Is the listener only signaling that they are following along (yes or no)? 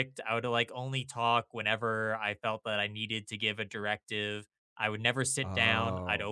yes